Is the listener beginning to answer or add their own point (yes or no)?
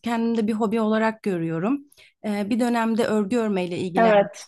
no